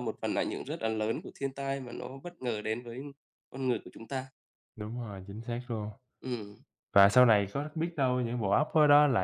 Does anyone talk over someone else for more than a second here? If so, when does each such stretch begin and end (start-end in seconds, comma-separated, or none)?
none